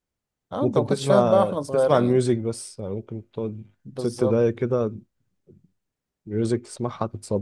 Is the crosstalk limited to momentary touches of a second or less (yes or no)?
no